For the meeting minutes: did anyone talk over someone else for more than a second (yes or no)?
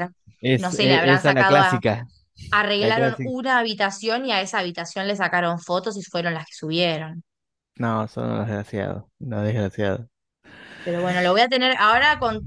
yes